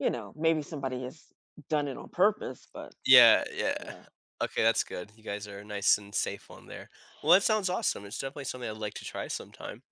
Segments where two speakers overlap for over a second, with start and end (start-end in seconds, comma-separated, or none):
none